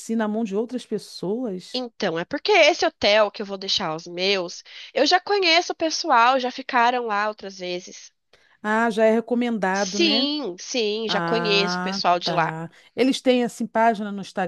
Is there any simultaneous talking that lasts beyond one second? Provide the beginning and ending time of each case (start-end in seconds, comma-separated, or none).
11.1-12.6